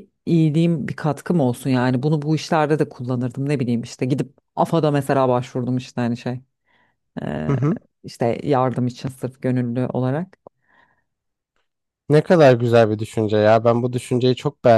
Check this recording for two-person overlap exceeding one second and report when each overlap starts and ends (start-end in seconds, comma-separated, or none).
none